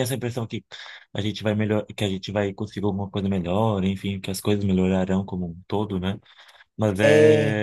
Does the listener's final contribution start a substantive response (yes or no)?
no